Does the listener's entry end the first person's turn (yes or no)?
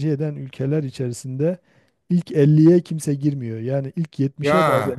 no